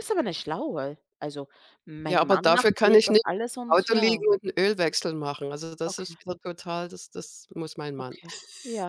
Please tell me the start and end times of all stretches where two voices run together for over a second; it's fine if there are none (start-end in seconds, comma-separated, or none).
2.1-4.2